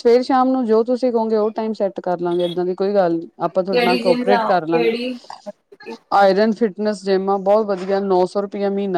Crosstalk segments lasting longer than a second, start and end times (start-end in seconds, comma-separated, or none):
3.7-4.9